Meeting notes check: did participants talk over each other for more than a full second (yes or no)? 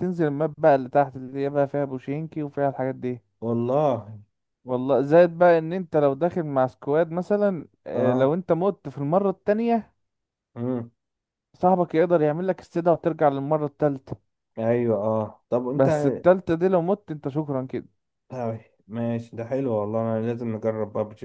no